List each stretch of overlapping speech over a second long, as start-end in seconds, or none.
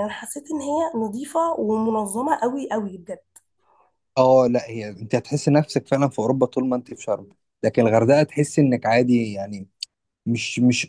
none